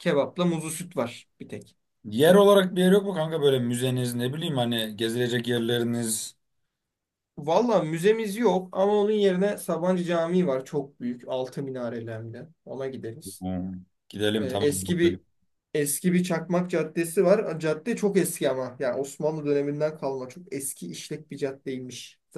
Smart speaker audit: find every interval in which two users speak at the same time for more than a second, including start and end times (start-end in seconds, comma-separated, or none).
none